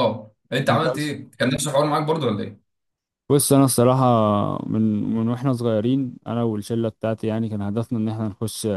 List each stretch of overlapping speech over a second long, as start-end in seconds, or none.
none